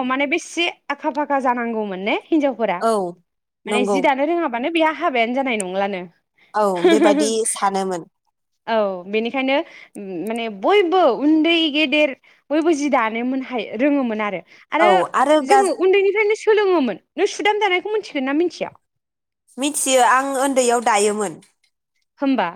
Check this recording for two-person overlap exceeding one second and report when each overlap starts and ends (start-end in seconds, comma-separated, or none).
none